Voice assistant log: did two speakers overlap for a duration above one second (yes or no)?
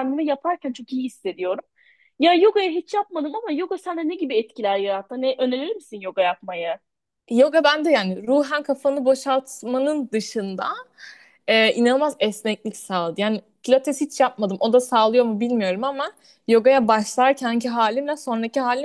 no